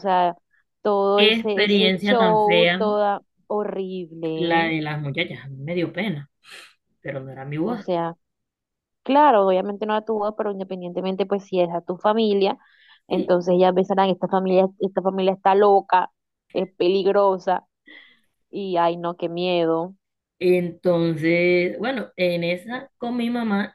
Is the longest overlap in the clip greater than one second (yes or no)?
yes